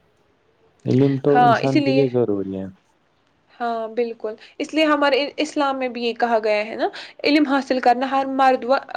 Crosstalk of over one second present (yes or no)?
no